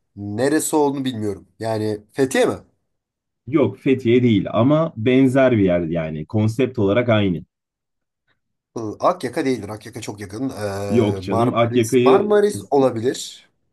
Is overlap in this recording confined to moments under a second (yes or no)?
no